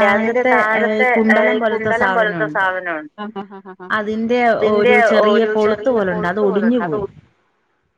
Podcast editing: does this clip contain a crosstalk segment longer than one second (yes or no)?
yes